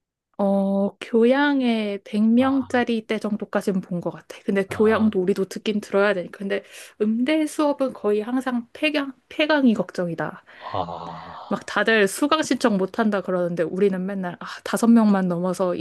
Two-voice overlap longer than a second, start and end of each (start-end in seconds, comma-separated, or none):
none